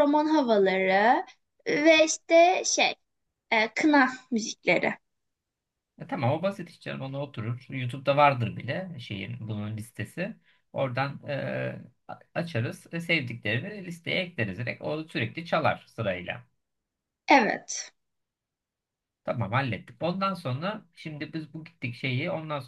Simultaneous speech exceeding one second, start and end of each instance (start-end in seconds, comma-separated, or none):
none